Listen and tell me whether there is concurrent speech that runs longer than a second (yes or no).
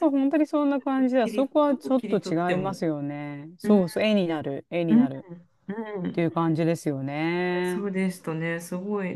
yes